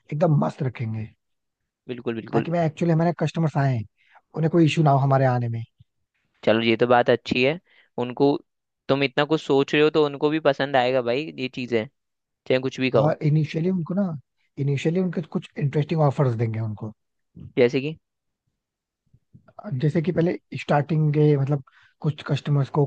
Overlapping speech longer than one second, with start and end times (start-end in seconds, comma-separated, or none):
none